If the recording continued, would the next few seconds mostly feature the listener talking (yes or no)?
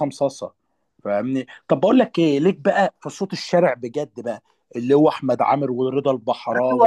yes